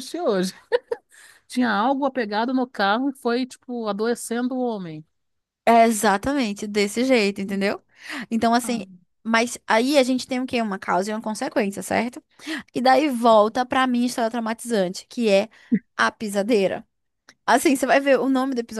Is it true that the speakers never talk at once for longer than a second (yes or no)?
yes